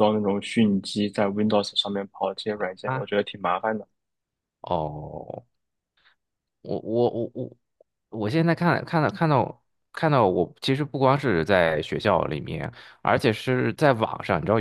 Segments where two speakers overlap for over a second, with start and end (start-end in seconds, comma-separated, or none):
none